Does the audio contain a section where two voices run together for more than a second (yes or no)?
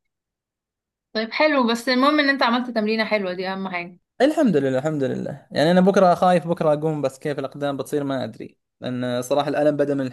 no